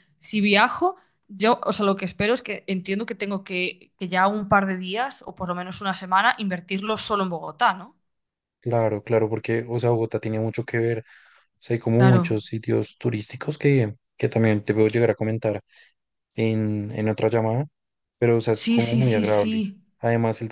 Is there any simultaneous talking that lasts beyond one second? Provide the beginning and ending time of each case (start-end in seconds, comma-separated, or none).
18.5-19.8